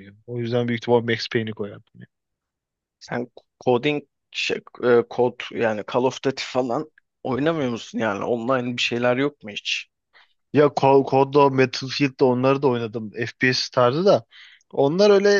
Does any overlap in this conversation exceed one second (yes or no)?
no